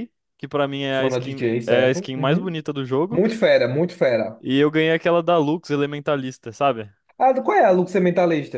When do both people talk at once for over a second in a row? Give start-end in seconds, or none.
0.9-2.5